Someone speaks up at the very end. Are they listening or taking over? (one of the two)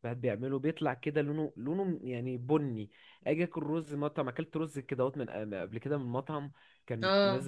listening